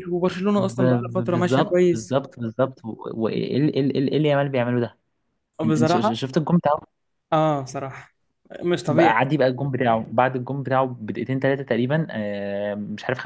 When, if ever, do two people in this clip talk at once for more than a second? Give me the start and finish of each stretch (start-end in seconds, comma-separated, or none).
0.6-2.2